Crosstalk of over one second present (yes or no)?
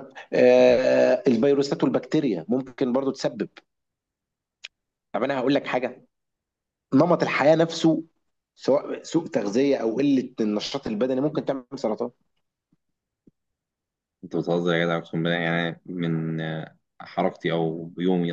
no